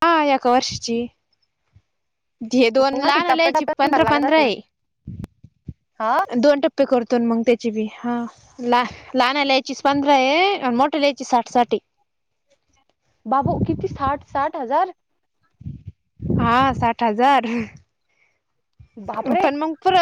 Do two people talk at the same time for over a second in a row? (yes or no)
yes